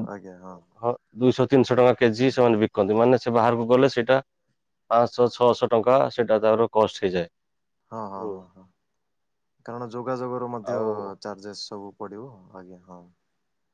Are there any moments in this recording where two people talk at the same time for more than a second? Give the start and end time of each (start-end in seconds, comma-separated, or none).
none